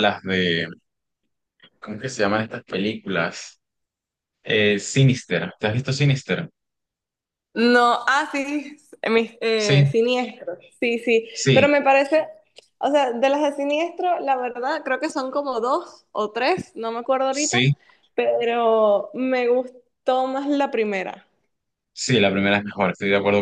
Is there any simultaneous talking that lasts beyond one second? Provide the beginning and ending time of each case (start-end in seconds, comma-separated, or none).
none